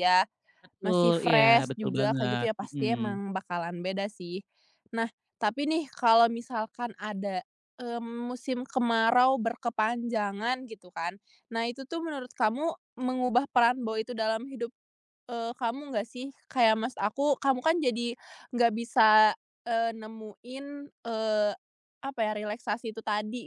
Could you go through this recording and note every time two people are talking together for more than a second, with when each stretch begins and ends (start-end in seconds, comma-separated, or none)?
0.8-2.9